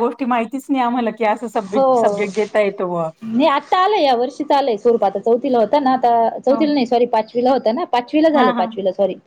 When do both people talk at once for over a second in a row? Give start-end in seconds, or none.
none